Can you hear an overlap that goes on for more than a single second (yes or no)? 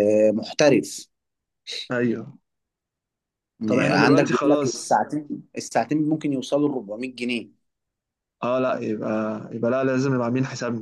yes